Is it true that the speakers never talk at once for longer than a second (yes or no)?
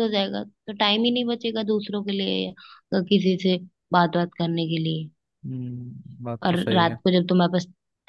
yes